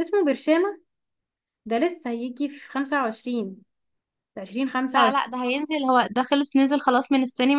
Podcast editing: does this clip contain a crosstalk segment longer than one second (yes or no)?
no